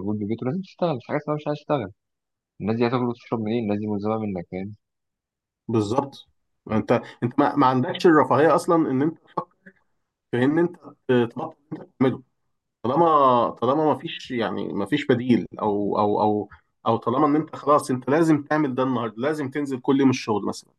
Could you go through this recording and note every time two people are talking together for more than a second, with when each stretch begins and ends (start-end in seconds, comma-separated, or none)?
none